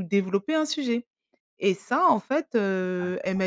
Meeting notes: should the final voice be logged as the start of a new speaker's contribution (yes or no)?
no